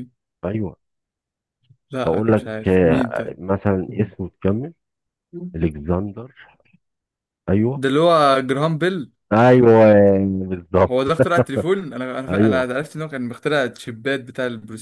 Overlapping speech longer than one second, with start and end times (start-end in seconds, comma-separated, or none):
2.0-3.4